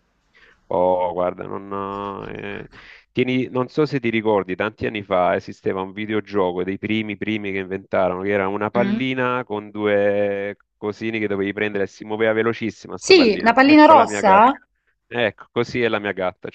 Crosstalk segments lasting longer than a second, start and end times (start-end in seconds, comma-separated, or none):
13.0-14.5